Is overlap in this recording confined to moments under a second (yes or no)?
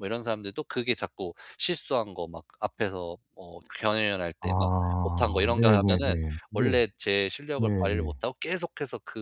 no